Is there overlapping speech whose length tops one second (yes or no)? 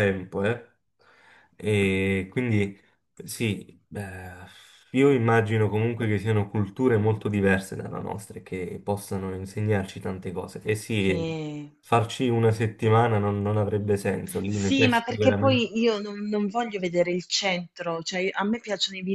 yes